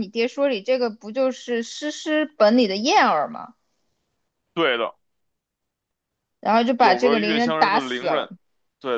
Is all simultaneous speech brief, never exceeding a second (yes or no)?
no